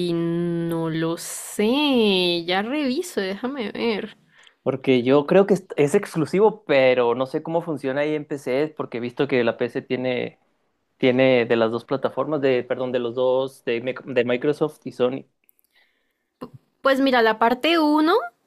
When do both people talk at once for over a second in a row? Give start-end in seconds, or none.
none